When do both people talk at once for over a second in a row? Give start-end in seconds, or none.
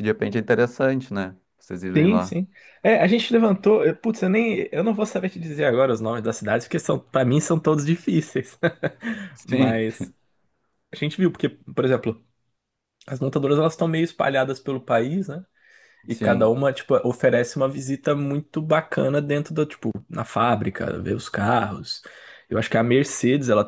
none